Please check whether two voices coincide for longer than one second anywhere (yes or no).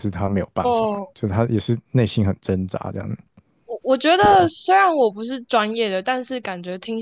no